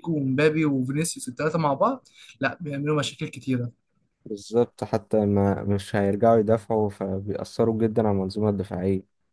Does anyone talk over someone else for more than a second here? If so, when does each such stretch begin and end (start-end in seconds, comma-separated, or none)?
none